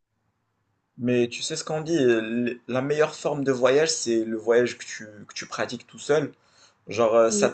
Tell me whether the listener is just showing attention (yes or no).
yes